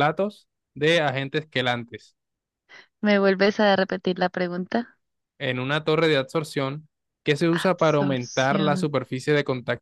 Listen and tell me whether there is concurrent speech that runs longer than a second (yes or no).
yes